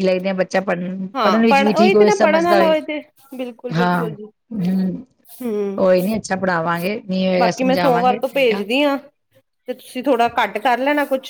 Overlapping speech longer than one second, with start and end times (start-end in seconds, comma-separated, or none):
1.1-2.8, 7.4-8.6